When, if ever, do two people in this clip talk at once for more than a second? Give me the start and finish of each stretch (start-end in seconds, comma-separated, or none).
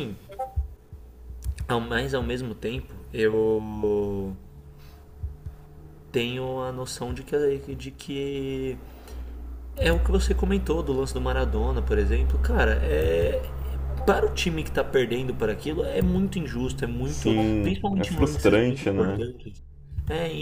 17.0-19.3